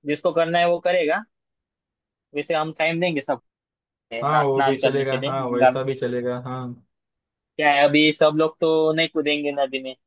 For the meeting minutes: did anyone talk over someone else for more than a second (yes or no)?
yes